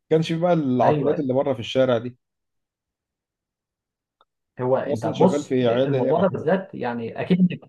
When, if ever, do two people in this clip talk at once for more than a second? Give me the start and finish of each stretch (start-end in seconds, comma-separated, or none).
4.8-6.5